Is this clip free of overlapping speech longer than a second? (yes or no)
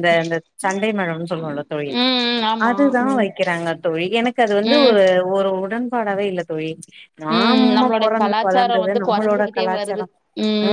no